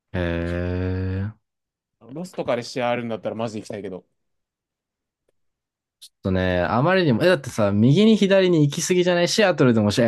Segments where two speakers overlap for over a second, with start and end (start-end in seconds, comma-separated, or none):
none